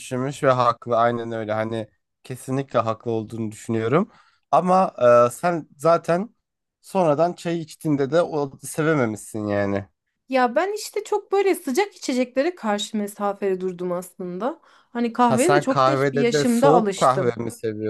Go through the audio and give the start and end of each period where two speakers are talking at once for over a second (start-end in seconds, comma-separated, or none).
15.3-17.3